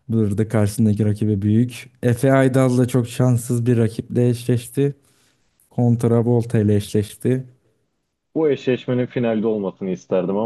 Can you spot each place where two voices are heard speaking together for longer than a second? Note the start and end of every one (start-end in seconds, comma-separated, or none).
none